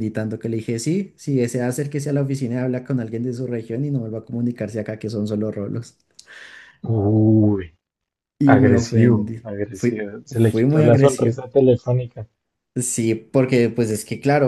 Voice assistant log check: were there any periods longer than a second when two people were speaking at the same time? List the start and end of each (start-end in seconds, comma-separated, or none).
8.5-11.4